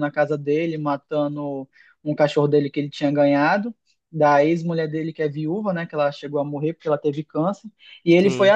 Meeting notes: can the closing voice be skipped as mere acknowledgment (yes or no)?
yes